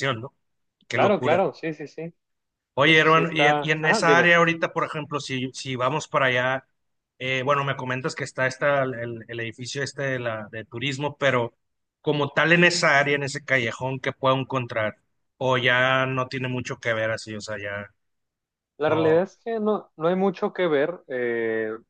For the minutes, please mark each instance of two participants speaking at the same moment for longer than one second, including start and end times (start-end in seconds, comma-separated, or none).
2.8-4.3